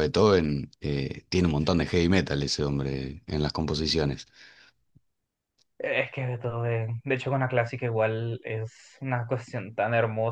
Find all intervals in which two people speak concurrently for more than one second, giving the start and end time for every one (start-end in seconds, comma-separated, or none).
none